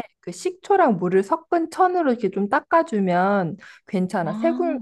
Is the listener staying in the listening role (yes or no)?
yes